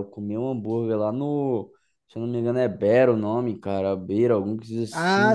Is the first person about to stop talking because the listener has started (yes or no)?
yes